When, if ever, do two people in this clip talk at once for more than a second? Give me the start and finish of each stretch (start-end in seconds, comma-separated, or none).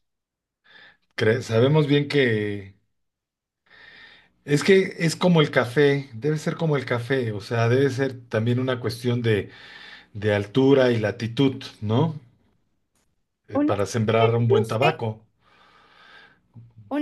13.5-14.9